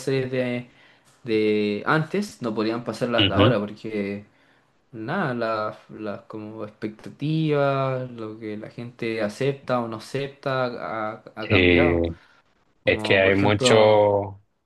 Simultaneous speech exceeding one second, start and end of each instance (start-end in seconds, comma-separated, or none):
12.8-14.1